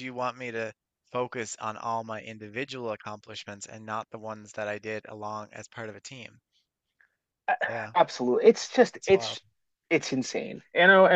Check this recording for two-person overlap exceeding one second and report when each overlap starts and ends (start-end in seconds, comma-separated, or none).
none